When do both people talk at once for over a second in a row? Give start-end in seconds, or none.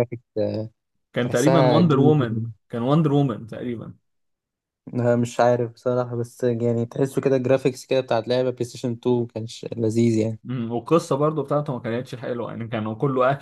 1.2-2.4